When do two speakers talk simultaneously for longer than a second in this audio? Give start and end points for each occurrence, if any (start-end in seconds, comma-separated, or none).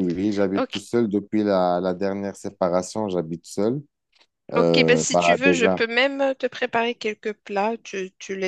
4.6-5.8